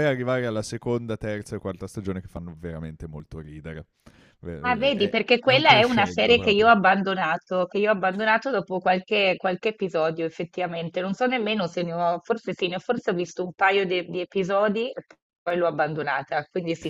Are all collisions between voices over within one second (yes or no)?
no